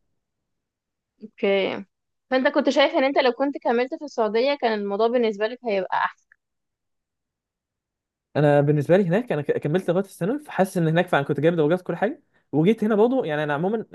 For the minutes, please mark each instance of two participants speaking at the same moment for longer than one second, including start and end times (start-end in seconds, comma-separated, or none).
none